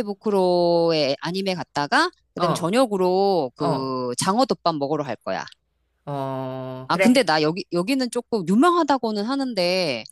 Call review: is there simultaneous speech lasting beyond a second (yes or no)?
no